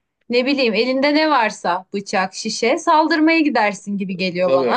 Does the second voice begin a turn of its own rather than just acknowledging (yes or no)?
yes